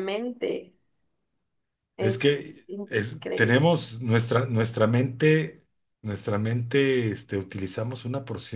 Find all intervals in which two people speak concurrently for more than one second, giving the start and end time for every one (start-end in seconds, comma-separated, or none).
2.0-3.7